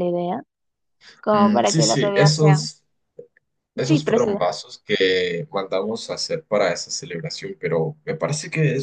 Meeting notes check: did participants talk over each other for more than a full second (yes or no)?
yes